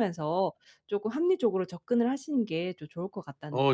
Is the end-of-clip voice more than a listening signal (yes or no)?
yes